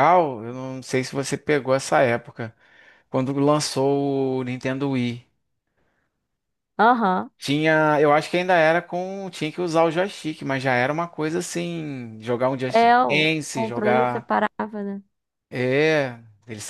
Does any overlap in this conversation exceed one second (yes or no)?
yes